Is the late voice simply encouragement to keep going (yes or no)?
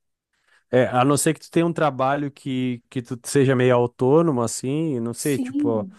yes